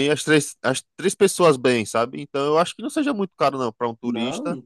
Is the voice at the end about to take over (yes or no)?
yes